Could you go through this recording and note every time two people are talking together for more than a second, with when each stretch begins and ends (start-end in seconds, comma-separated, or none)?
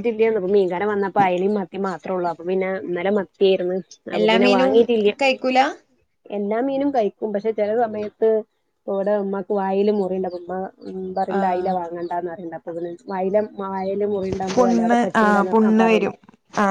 14.5-16.1